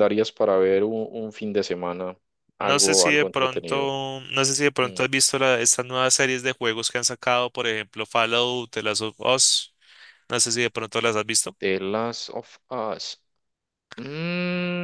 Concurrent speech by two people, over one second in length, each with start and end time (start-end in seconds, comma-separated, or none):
2.6-3.9